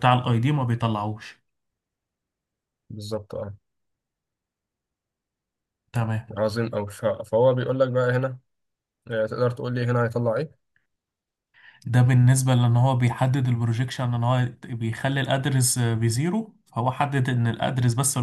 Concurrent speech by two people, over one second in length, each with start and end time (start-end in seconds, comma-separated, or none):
none